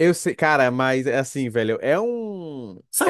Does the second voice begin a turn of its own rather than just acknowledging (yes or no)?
yes